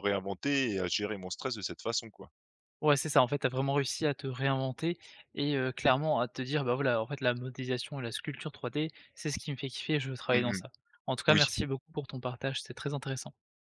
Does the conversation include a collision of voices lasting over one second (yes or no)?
no